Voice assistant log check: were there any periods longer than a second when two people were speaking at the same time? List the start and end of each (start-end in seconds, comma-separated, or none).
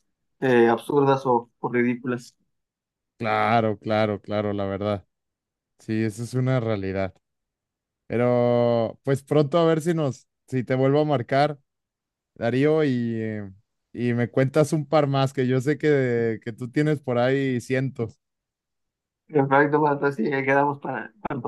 none